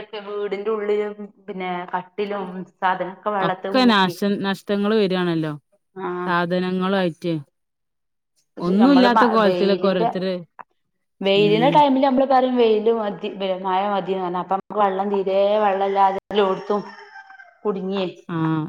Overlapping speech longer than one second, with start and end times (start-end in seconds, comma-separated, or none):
8.7-10.3